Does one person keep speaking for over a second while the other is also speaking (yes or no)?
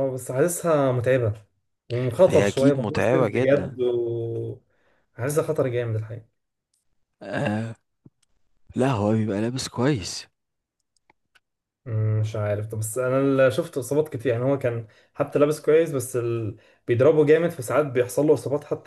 yes